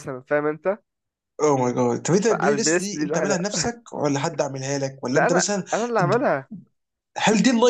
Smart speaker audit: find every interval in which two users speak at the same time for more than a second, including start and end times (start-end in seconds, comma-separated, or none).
2.3-3.5